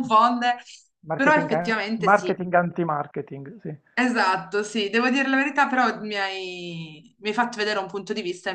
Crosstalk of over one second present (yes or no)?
yes